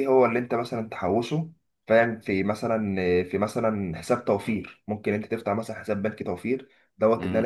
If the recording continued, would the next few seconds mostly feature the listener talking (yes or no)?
no